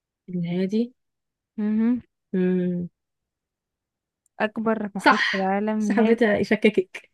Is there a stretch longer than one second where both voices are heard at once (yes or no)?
yes